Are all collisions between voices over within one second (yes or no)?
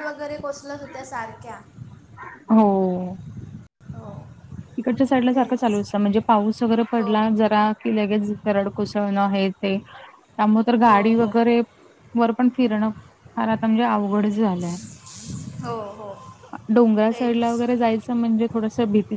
yes